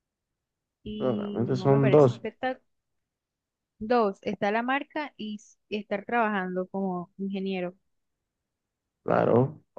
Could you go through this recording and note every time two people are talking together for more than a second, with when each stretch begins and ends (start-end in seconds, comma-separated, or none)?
1.0-2.2